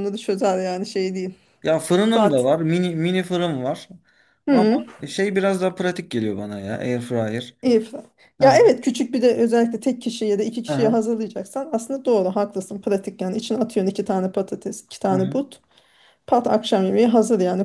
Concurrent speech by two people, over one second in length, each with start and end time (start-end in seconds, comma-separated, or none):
none